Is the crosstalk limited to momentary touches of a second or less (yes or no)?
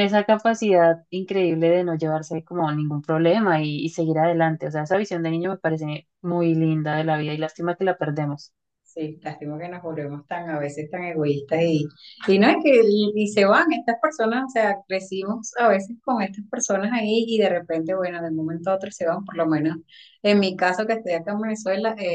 yes